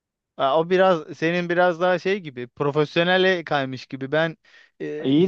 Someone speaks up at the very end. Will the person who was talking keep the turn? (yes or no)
yes